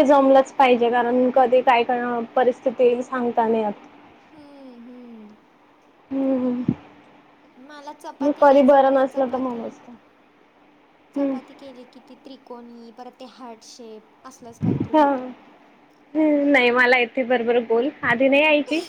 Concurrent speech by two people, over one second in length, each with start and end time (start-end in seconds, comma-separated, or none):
8.2-9.6